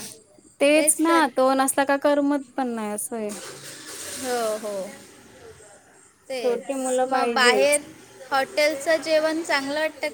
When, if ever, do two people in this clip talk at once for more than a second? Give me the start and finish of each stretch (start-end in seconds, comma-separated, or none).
6.4-7.8